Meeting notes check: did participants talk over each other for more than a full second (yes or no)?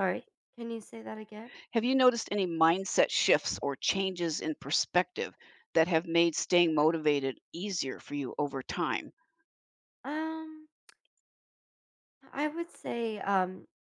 no